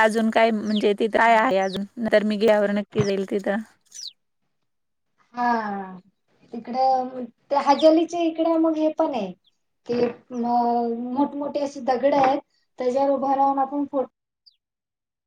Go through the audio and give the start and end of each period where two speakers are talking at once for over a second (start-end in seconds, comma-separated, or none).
none